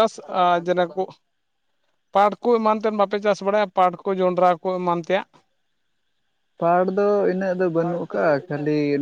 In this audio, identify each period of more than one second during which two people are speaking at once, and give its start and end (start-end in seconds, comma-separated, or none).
none